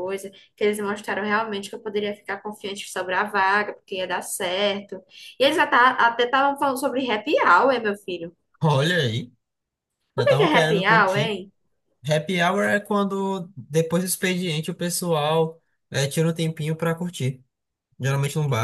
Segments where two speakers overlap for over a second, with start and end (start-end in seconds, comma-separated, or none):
10.2-11.4